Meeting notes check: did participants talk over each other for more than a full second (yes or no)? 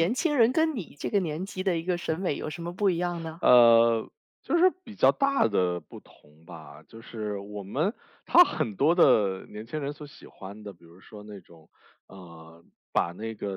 no